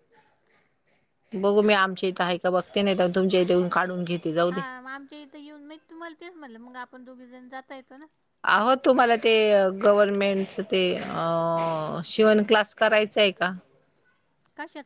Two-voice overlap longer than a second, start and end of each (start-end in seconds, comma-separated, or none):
none